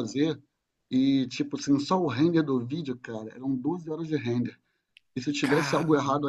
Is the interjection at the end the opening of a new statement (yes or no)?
no